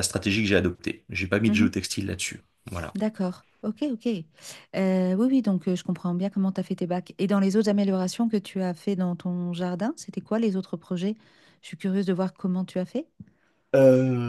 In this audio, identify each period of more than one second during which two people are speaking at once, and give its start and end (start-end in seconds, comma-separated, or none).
none